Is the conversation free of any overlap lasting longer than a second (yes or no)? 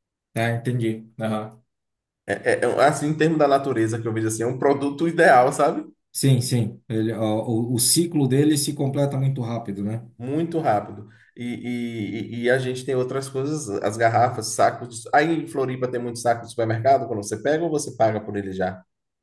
yes